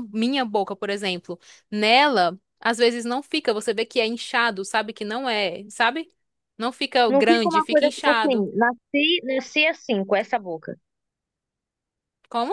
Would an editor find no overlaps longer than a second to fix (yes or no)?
no